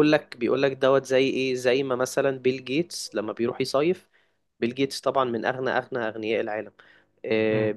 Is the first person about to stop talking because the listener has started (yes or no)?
no